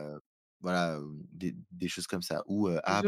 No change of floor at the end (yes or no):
yes